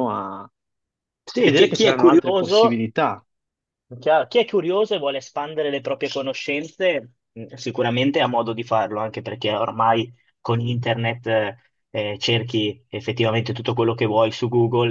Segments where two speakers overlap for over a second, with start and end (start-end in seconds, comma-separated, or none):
1.4-2.8